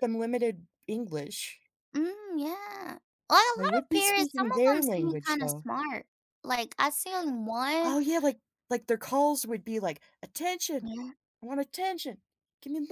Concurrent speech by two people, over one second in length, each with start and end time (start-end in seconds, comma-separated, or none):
3.6-5.7